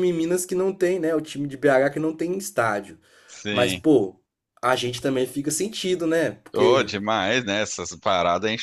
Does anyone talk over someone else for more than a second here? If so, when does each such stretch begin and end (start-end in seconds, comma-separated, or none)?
none